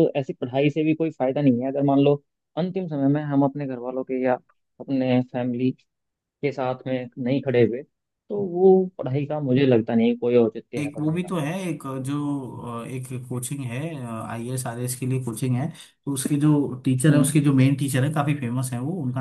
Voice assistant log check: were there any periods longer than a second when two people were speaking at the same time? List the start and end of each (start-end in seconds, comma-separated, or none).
none